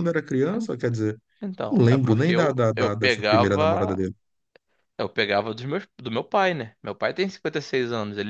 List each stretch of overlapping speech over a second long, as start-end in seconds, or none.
1.7-4.0